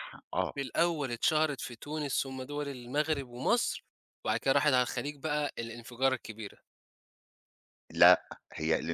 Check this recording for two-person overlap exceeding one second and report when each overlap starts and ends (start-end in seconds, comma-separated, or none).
none